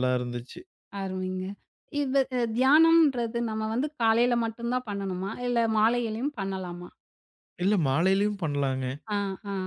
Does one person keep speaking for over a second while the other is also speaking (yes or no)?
no